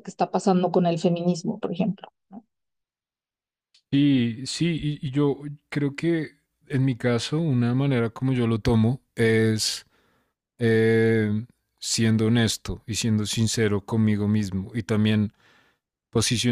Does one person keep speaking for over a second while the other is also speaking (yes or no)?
no